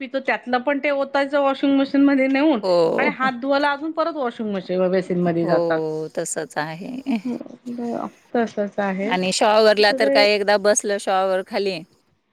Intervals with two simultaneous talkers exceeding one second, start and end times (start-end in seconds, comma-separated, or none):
none